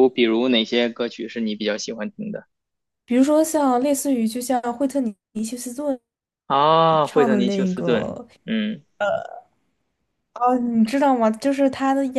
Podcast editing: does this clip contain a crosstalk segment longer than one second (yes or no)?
yes